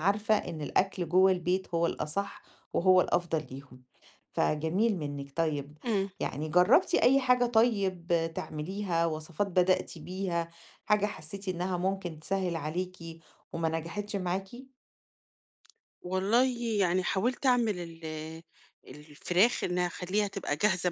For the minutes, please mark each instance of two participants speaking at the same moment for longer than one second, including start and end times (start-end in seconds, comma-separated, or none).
none